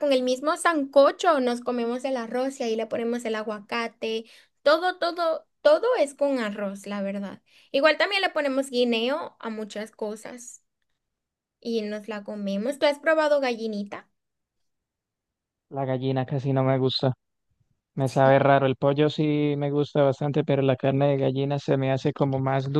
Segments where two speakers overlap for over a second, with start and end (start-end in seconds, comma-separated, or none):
none